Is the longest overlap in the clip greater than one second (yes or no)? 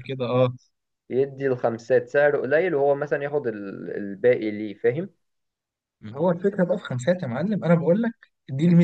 no